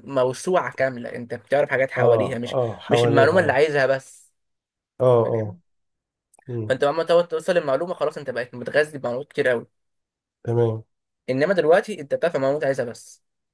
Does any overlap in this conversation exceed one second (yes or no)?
yes